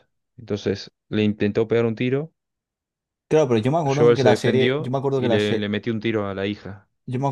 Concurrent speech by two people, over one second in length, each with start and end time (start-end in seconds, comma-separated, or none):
3.9-5.7